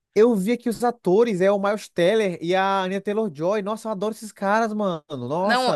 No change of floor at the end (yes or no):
no